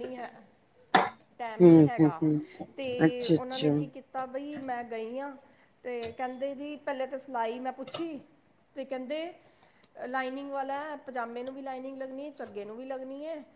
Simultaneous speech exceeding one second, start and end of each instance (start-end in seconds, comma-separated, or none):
none